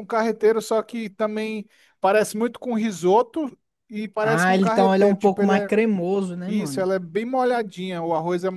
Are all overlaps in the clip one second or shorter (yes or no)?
no